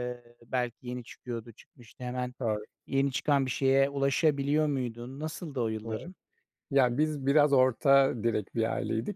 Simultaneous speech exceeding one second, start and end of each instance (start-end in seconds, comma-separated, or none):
none